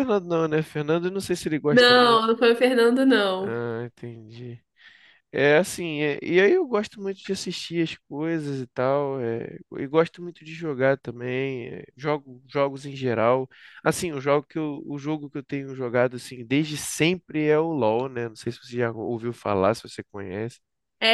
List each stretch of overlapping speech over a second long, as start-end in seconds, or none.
none